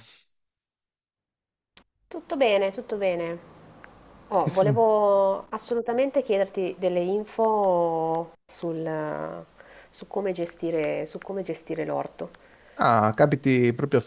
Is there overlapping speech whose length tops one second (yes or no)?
no